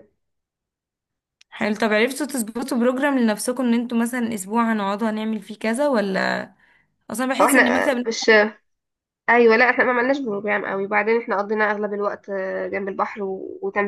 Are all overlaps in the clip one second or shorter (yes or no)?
yes